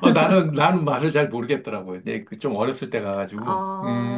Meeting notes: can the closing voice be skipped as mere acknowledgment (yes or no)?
no